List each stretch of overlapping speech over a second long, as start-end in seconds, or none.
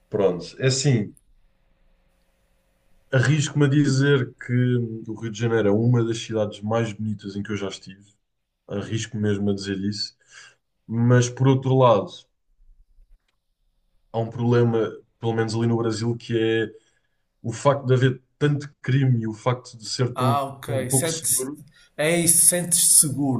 20.1-21.5